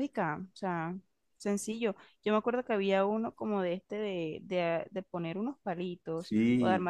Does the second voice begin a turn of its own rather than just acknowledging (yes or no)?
yes